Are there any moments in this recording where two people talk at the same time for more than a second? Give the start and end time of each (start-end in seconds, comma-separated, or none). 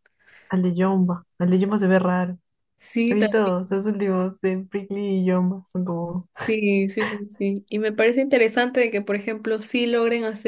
none